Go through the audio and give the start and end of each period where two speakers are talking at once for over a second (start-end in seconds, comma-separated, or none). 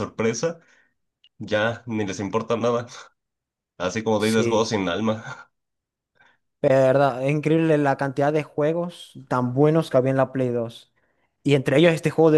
none